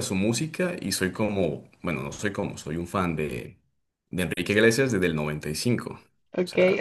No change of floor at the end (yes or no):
no